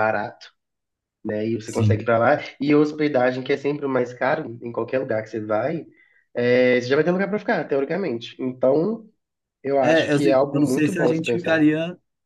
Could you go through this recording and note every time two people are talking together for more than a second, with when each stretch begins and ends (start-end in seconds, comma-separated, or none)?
9.8-11.6